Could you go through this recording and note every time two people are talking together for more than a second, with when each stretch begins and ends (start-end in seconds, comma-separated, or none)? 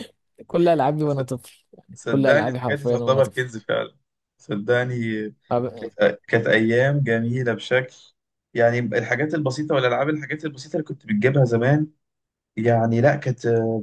1.9-3.4